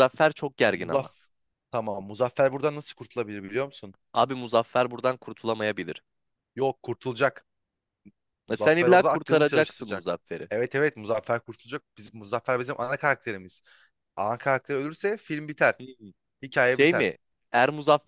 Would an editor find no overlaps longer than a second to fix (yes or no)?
no